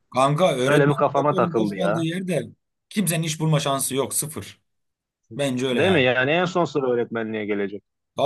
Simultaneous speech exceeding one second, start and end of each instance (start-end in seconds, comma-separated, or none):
0.6-2.1